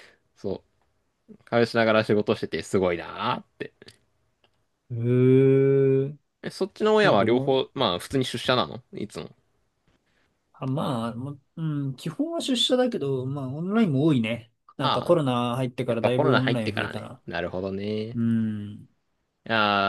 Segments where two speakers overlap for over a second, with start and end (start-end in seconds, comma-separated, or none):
15.8-17.2